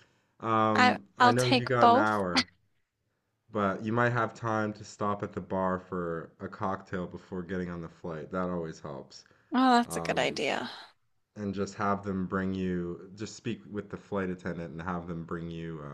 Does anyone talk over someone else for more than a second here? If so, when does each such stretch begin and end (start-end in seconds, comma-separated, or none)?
0.7-2.2